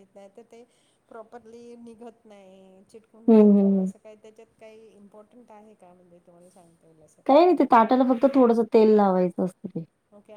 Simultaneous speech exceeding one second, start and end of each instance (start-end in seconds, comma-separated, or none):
none